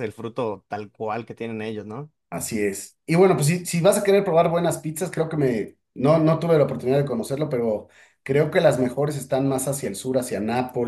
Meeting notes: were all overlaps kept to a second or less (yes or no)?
yes